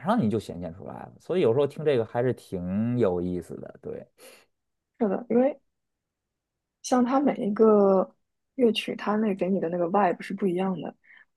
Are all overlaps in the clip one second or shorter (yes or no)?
yes